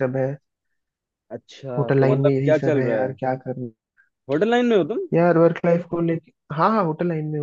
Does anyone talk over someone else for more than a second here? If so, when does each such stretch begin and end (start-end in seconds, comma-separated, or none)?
1.8-3.2